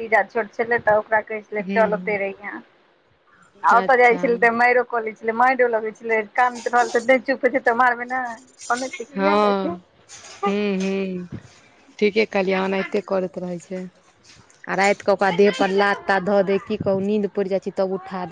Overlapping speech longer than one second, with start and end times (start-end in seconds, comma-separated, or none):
none